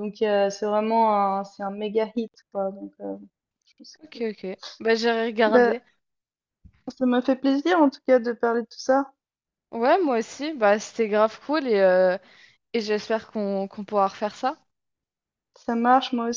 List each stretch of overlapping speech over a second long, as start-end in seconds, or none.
none